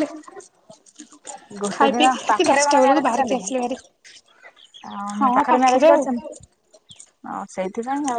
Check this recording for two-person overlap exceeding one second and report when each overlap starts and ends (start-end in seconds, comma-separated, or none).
1.7-3.5